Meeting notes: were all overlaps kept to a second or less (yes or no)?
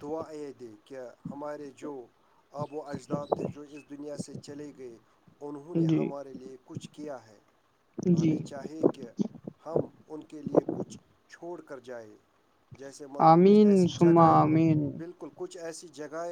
no